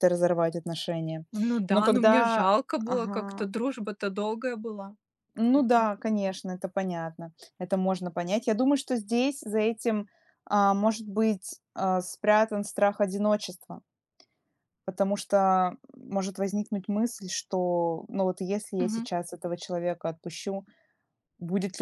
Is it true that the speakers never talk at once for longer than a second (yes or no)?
no